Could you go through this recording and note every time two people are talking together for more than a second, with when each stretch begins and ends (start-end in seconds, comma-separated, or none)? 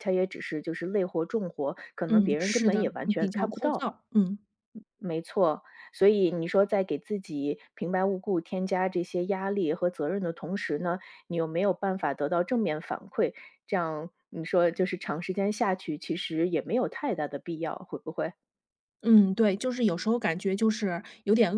2.1-3.9